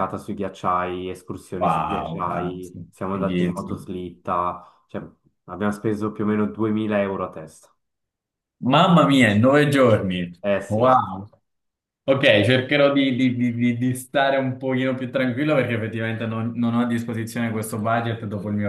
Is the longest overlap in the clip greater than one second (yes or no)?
yes